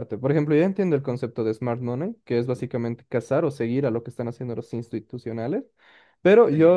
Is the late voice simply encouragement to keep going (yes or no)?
yes